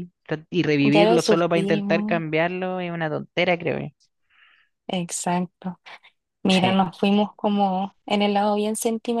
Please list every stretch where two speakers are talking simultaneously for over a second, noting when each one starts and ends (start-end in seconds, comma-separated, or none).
0.9-2.2